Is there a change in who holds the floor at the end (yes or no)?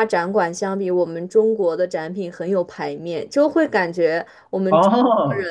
no